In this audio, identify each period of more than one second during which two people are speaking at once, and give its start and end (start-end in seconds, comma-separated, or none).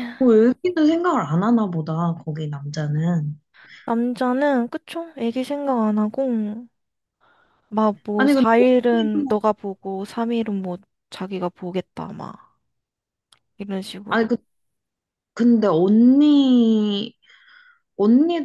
8.2-9.4